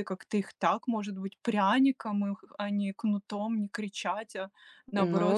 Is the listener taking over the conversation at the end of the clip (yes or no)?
yes